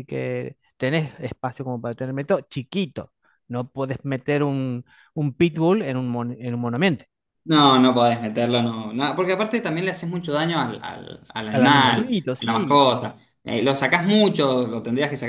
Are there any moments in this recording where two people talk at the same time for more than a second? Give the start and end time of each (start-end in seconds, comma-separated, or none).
11.5-12.8